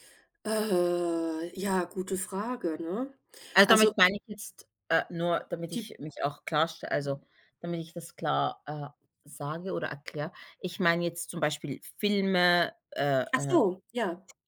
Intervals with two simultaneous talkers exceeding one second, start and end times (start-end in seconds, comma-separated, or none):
none